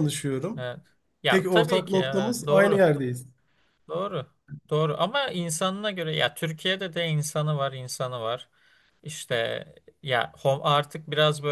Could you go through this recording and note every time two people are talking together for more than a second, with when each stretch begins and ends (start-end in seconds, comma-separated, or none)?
1.3-2.9